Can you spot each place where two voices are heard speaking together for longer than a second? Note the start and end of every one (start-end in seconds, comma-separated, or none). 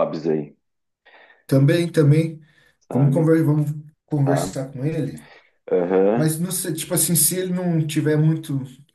none